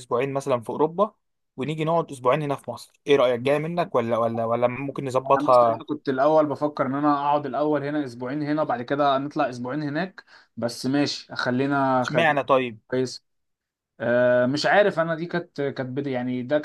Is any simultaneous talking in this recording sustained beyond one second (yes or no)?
no